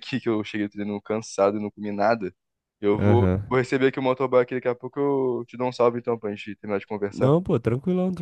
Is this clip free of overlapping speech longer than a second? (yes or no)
yes